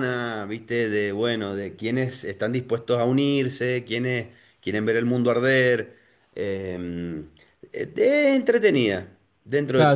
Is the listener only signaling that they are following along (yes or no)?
no